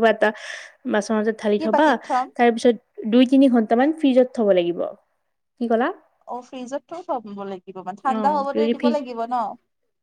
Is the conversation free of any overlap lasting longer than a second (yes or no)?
yes